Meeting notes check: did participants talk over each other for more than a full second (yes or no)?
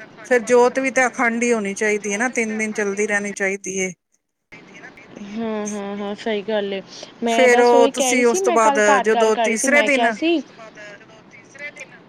yes